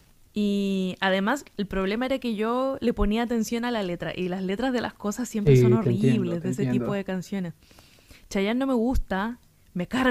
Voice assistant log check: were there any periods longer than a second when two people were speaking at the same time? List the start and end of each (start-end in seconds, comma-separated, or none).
5.4-7.0